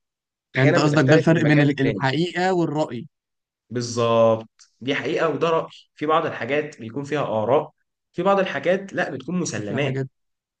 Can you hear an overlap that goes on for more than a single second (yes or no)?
yes